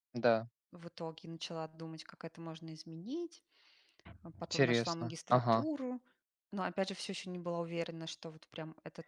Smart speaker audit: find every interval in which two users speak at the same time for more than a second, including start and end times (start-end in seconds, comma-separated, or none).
4.4-5.7